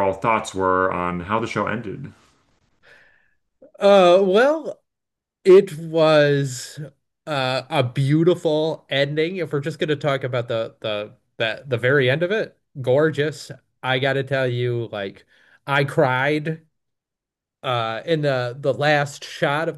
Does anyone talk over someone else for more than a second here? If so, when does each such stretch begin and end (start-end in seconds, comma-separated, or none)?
none